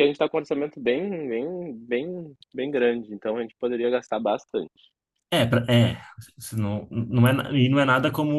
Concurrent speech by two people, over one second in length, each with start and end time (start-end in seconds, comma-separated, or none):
none